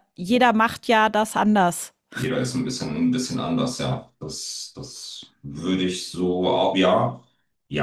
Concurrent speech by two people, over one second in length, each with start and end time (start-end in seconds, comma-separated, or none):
none